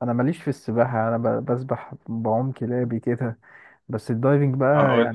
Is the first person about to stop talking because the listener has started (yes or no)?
no